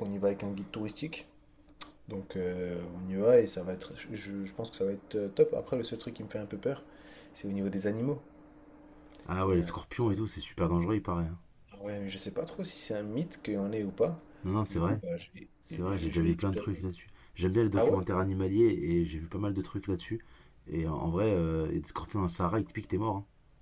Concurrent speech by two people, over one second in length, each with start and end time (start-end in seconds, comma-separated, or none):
15.6-16.9